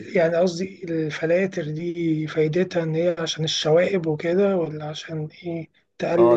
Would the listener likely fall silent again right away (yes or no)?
no